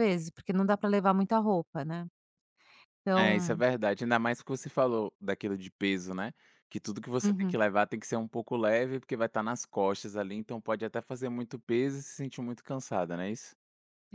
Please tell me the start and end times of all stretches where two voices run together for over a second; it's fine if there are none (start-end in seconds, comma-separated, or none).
none